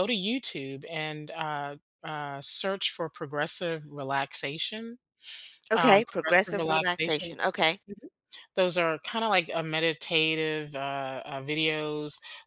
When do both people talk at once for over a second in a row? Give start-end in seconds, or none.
5.8-7.3